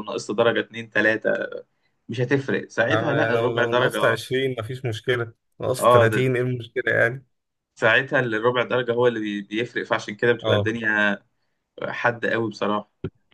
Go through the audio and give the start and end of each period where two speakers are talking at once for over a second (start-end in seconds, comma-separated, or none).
2.8-4.2